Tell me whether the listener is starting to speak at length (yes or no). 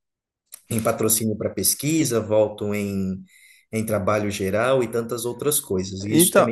yes